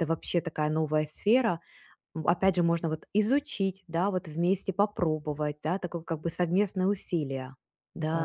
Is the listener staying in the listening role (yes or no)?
no